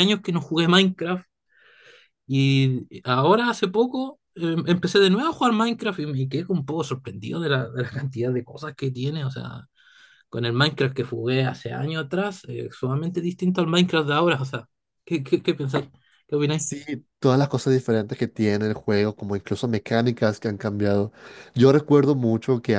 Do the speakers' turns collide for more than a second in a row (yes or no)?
no